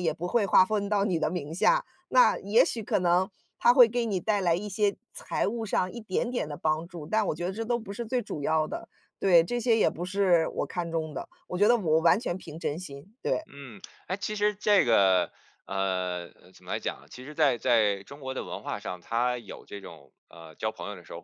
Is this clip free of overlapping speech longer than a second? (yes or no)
yes